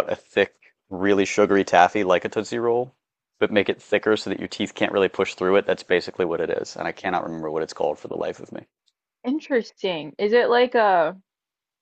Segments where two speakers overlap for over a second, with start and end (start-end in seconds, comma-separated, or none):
none